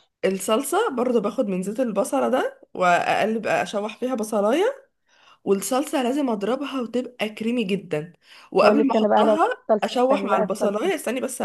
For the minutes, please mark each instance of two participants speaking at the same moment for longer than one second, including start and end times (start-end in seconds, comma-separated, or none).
8.6-10.9